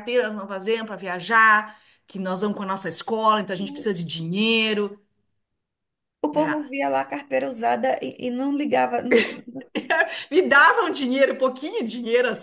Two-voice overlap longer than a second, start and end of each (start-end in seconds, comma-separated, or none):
none